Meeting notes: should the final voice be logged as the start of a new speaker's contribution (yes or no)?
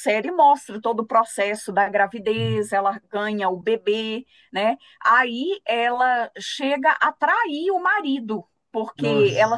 no